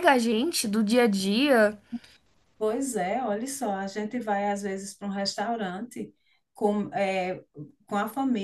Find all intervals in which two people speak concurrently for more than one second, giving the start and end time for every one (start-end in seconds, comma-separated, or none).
none